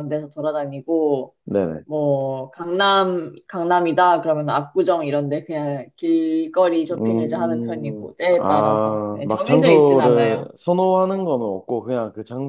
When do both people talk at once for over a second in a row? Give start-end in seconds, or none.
7.0-10.5